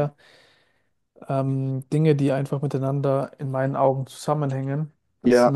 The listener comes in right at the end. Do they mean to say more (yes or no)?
yes